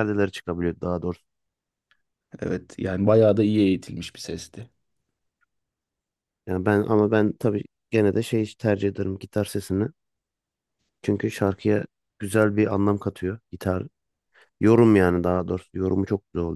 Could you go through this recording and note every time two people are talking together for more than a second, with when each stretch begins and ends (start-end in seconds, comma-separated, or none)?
none